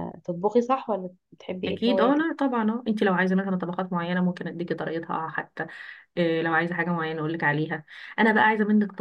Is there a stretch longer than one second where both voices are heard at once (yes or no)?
no